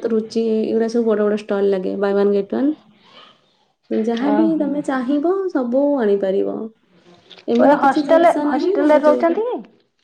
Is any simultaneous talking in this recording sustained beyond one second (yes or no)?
yes